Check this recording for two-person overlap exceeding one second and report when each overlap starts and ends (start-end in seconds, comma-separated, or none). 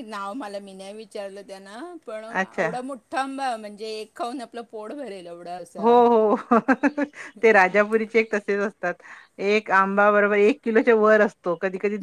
none